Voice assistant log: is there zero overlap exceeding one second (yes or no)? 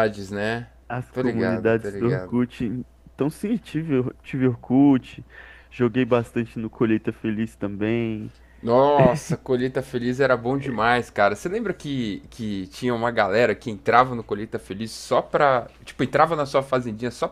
no